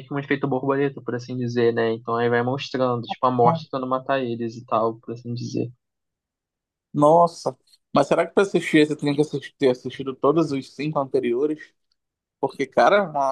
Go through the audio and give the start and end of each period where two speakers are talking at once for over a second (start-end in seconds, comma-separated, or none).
none